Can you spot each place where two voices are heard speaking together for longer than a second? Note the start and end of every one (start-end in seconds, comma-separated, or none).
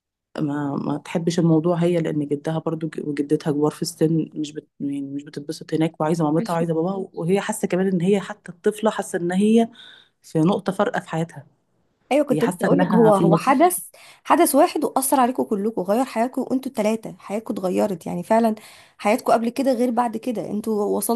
12.3-13.5